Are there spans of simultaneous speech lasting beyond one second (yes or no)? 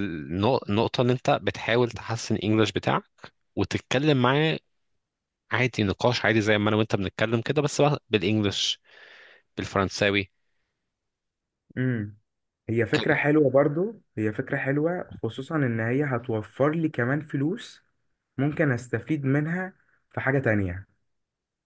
no